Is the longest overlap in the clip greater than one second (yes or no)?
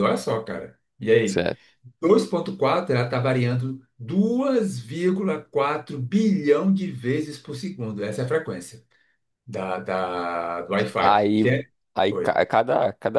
no